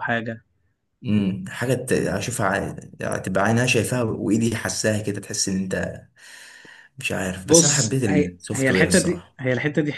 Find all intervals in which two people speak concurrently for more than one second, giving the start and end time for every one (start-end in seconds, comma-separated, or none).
7.5-9.4